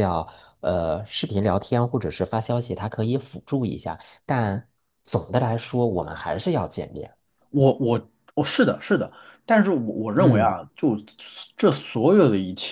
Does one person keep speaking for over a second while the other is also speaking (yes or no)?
no